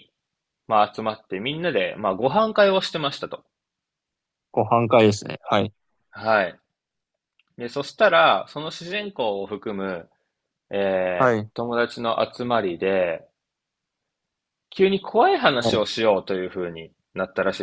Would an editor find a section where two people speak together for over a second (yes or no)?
no